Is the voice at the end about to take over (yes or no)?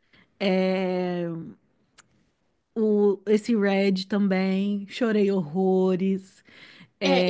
yes